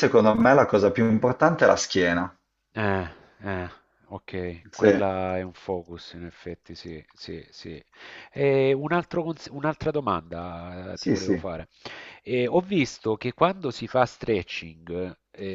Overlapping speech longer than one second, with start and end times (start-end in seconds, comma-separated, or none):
none